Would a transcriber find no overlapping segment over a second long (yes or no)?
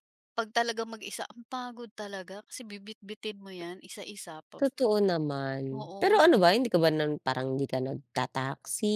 yes